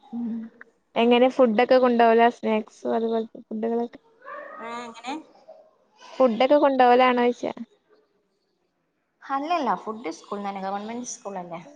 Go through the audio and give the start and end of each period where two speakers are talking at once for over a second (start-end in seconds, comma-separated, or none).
none